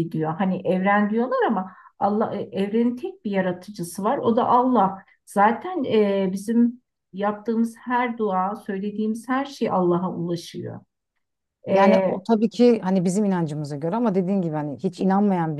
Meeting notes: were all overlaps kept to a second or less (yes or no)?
yes